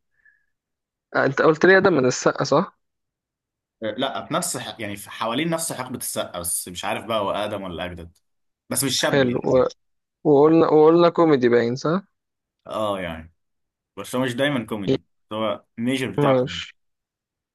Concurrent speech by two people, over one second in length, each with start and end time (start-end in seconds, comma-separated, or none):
none